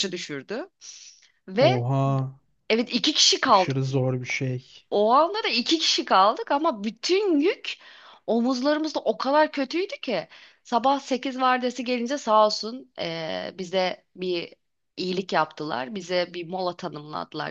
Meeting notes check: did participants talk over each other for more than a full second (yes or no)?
no